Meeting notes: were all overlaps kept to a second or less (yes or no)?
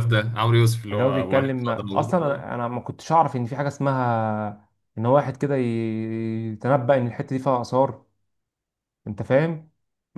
no